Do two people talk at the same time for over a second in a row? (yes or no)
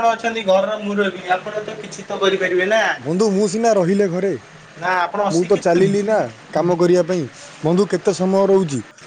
no